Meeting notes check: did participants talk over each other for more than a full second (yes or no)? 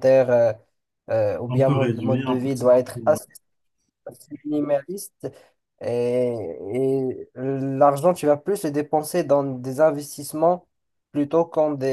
yes